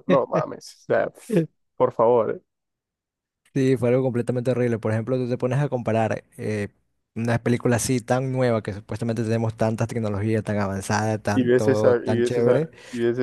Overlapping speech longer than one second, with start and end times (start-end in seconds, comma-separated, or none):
11.3-12.7